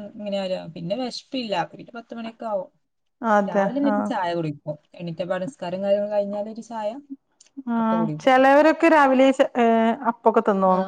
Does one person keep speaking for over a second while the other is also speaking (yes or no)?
no